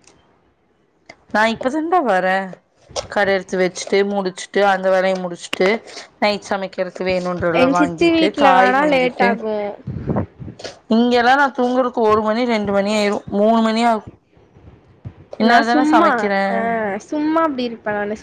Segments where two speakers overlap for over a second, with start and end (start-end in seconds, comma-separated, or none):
7.6-9.3